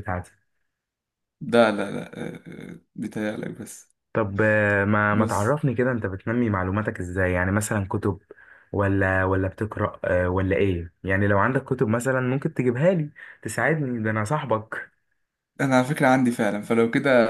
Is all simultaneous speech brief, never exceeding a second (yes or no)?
yes